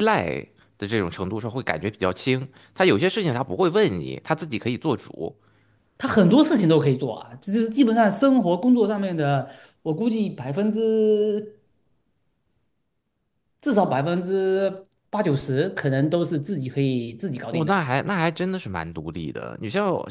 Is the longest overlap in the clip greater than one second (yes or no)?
no